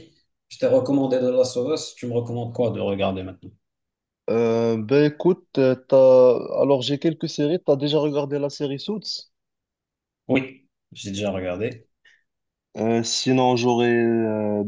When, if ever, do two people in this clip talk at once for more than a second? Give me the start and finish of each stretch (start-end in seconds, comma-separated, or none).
none